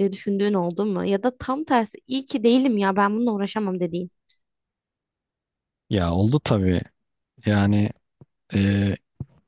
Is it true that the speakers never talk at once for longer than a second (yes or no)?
yes